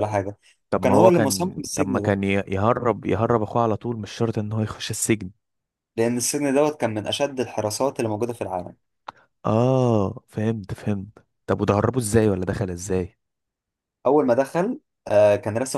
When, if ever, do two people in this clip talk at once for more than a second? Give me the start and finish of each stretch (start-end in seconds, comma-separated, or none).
0.7-2.2